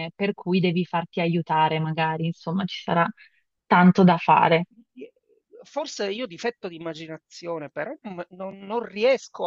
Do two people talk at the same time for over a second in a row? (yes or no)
no